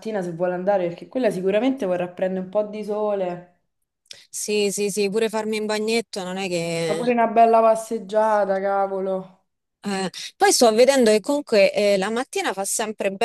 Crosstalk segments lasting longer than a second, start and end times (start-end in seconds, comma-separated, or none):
none